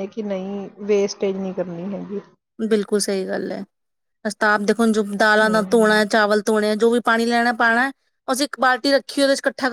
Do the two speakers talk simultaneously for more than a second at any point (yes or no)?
no